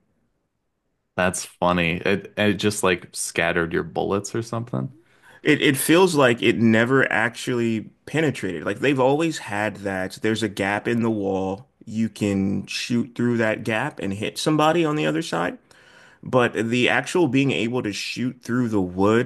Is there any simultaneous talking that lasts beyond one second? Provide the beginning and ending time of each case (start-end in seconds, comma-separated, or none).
none